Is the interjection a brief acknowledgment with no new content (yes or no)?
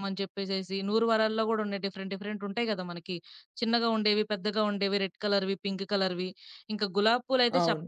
yes